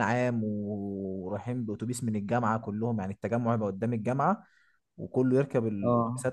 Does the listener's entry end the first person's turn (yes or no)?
no